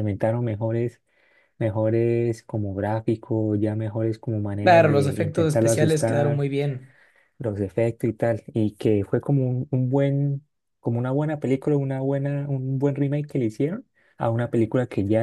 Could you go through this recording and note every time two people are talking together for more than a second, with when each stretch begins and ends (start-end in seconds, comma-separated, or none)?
4.6-6.5